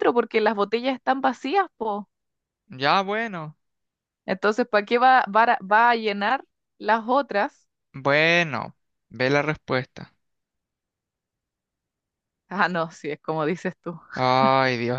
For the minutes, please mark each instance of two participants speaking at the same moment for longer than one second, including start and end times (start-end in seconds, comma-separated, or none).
none